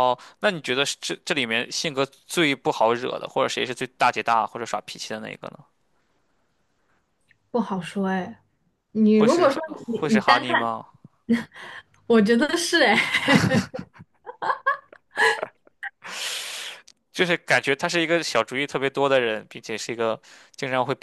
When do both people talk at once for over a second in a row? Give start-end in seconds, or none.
9.1-10.7